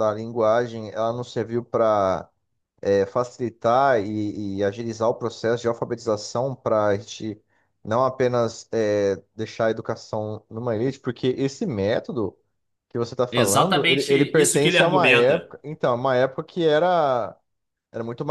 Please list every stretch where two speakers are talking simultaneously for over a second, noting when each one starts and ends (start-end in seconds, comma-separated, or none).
13.3-15.5